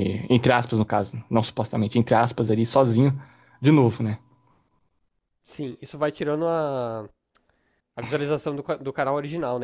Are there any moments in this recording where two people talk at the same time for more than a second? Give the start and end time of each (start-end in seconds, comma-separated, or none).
none